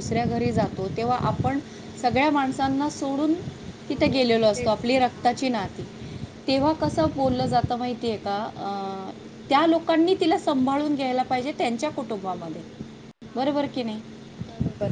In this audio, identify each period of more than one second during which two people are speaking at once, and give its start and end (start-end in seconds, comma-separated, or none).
3.9-5.7